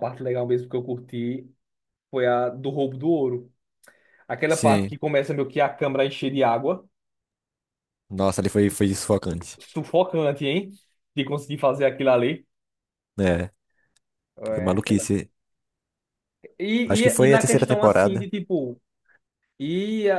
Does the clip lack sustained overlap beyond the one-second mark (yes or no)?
no